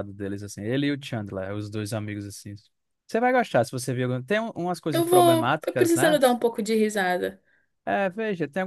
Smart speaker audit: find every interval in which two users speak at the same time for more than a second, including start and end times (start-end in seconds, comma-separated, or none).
4.9-6.2